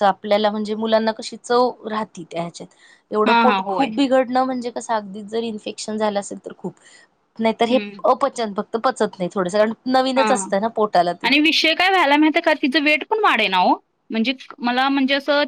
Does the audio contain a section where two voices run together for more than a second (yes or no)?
no